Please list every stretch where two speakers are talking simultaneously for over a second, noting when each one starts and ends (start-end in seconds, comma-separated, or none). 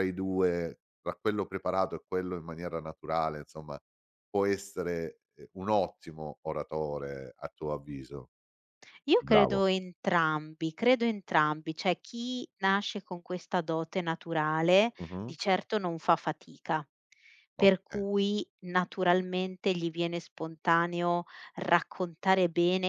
none